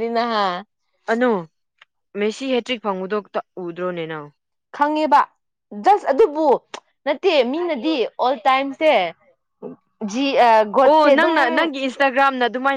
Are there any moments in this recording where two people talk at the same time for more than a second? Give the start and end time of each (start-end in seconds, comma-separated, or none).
none